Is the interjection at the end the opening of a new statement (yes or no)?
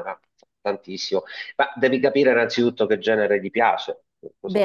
yes